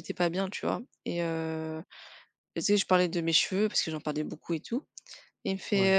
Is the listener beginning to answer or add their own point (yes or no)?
no